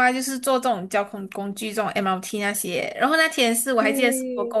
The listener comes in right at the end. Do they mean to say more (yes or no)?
no